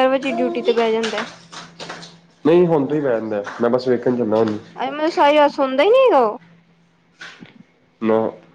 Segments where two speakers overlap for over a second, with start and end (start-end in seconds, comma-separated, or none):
none